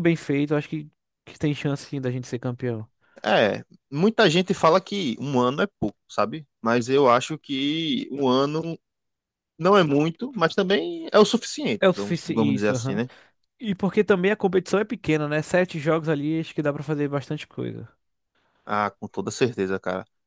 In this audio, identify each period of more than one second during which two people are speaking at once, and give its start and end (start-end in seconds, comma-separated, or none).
11.8-13.0